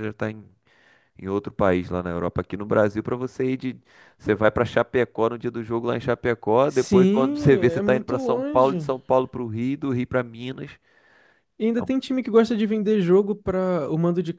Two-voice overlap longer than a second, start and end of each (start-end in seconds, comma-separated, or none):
6.7-8.9